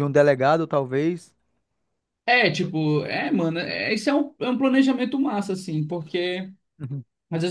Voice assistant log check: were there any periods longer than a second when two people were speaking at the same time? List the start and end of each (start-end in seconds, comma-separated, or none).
none